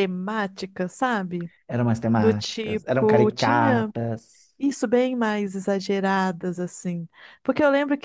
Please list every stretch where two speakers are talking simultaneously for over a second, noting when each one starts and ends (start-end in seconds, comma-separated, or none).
2.2-3.9